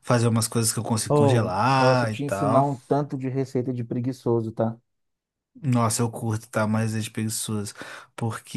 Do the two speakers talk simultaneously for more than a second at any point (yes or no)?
yes